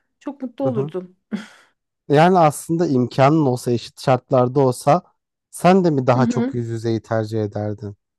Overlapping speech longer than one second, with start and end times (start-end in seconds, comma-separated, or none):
none